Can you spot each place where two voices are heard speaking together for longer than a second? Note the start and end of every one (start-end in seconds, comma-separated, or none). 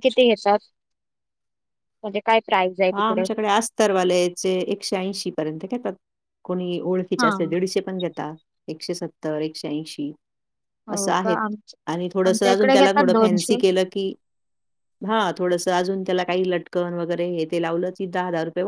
12.2-13.6